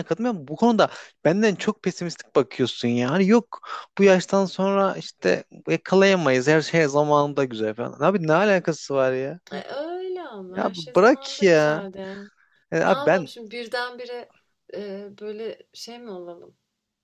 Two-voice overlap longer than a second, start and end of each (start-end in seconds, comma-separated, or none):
10.5-11.9